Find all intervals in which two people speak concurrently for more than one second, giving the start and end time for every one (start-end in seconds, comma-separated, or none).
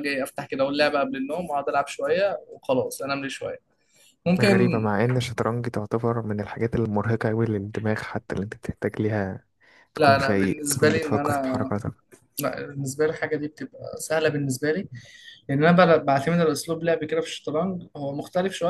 10.0-11.6